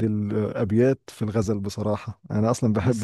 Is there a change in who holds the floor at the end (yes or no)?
no